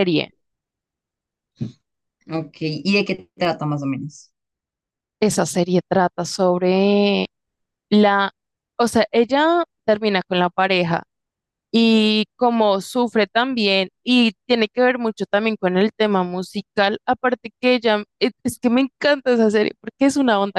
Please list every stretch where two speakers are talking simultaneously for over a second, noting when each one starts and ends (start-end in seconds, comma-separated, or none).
none